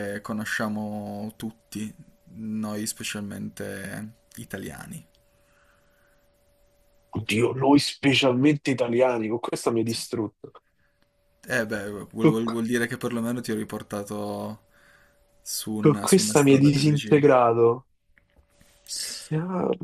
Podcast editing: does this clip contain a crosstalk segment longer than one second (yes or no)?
yes